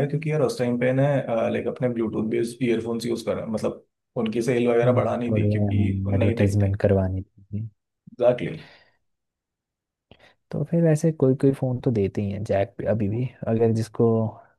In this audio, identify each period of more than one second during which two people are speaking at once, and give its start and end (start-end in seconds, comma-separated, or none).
4.8-6.8